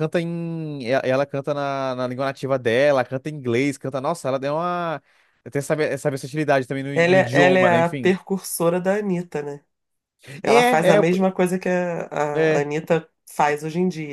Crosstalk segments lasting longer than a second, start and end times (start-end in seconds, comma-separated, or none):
6.9-8.1